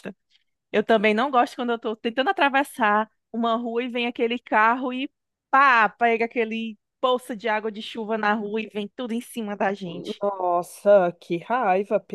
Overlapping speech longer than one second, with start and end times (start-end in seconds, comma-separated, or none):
none